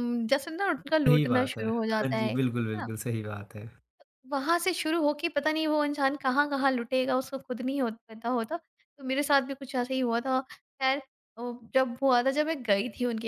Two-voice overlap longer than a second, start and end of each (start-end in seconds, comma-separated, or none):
1.1-2.9